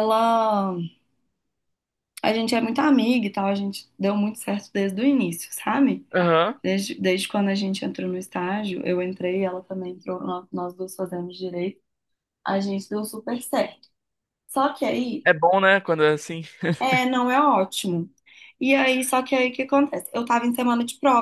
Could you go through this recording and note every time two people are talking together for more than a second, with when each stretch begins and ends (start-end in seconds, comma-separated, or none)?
none